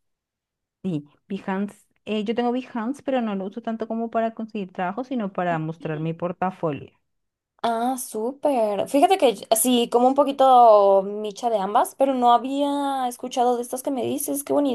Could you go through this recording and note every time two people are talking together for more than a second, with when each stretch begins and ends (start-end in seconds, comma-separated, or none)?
none